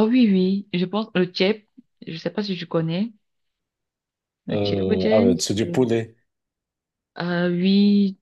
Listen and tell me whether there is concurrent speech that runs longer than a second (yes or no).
yes